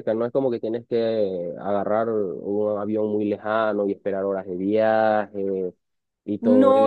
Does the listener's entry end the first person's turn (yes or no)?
yes